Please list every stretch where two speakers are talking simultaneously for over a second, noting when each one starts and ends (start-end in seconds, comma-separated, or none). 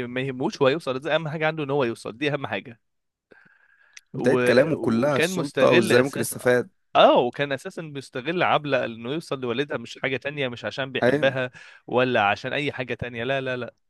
4.1-6.5